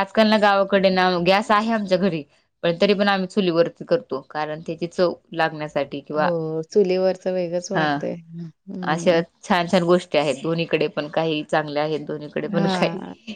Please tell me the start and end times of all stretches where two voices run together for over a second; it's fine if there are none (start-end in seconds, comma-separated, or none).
none